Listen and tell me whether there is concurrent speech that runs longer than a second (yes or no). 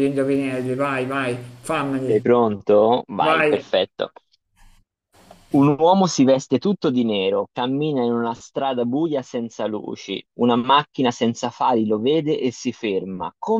no